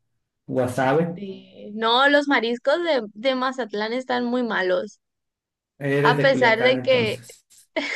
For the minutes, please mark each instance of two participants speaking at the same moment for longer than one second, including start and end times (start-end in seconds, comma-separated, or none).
6.0-7.2